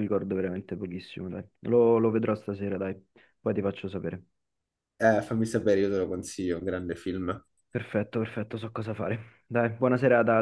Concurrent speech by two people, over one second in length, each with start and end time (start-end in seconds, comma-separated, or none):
none